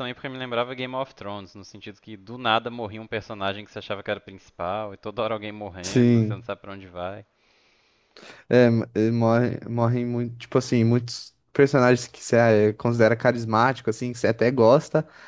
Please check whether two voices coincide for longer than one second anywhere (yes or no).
no